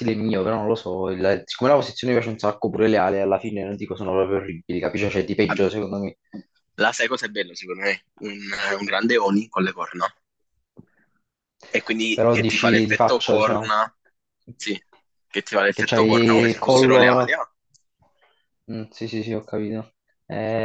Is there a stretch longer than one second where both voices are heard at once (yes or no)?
yes